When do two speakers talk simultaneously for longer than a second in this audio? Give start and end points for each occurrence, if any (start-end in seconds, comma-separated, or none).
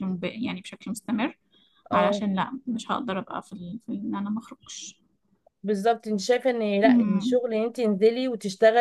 none